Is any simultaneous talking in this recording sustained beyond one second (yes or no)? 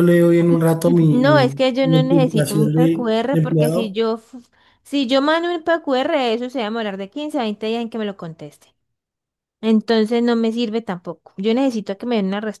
yes